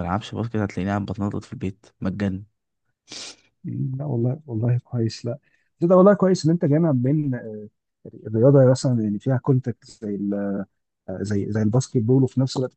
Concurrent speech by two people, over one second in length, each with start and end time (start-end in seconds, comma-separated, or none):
none